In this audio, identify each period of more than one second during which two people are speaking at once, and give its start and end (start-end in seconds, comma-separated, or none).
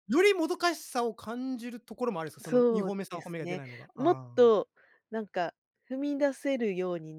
2.4-4.5